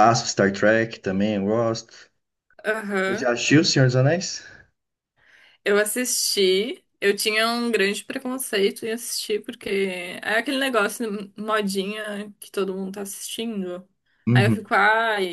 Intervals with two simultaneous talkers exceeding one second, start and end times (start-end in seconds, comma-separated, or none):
none